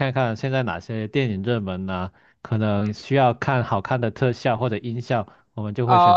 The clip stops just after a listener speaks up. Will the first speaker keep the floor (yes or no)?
no